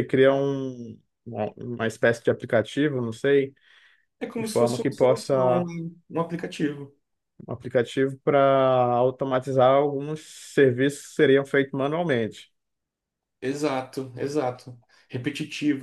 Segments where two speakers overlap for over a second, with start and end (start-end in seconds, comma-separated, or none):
4.4-5.6